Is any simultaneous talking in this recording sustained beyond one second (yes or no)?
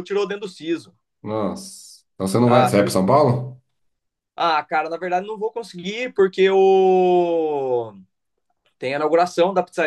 no